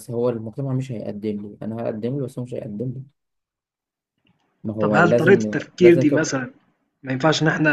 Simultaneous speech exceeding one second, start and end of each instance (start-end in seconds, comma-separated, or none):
4.8-6.3